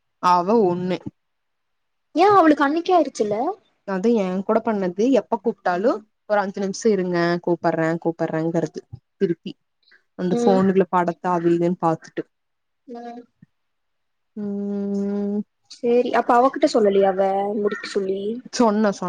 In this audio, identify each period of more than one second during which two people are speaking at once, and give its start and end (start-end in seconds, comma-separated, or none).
none